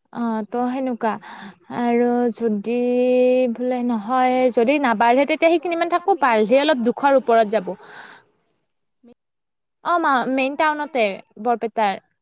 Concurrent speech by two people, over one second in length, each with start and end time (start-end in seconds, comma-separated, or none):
5.6-7.4